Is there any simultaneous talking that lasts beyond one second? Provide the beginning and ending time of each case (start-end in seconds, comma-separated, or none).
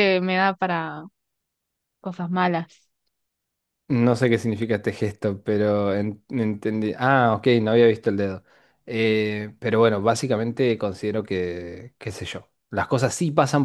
none